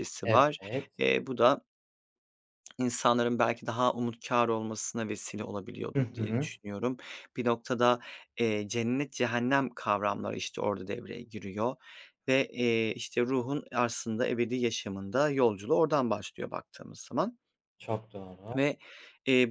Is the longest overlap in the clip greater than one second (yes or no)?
no